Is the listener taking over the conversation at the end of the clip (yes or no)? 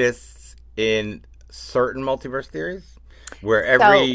no